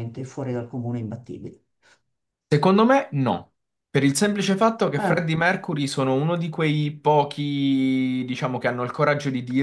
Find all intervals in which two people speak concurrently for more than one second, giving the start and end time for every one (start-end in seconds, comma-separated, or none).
none